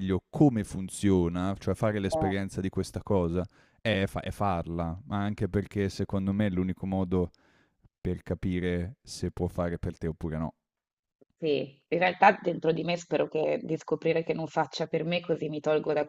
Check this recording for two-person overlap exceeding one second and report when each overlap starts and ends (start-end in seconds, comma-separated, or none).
none